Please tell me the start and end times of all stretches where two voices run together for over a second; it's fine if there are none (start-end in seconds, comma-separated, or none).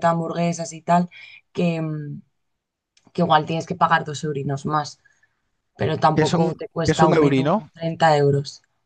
6.2-7.7